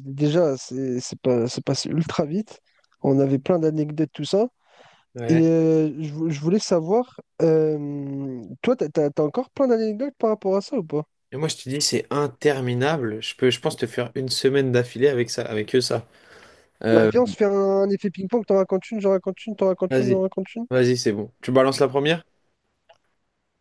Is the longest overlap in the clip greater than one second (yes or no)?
no